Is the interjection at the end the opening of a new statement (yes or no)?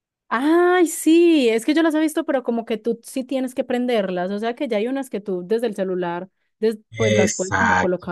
yes